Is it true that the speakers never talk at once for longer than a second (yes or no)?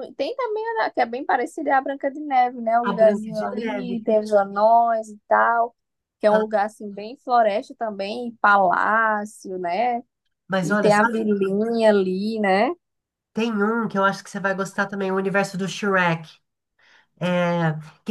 no